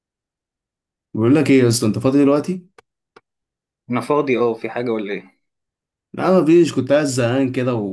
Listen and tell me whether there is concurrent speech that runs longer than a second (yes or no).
no